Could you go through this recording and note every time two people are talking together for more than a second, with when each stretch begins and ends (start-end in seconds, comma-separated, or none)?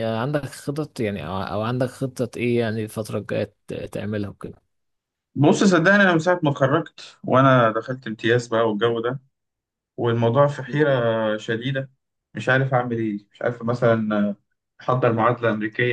none